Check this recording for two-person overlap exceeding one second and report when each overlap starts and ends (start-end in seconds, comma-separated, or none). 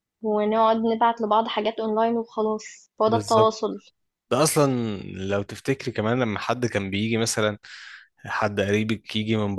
none